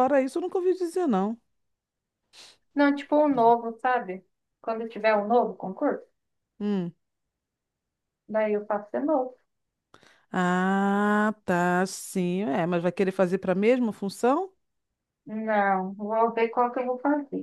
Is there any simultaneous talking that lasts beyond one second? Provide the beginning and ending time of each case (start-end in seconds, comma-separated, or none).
none